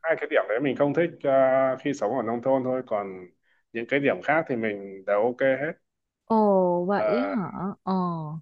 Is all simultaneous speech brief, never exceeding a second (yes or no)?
yes